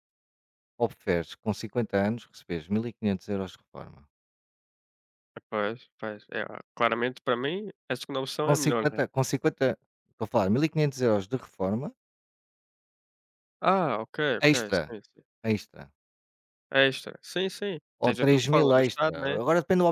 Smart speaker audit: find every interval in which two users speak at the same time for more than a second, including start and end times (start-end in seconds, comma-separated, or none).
18.0-19.4